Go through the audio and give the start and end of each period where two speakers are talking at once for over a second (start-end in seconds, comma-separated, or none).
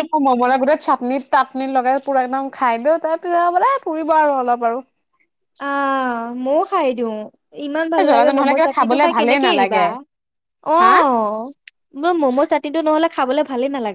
8.0-9.8